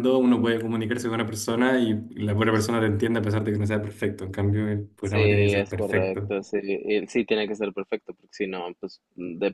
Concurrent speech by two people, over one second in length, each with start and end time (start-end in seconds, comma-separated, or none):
5.0-6.3